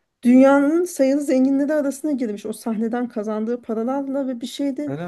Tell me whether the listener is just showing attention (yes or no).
yes